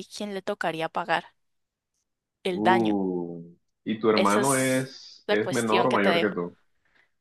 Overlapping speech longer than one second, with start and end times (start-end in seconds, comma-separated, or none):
4.1-6.3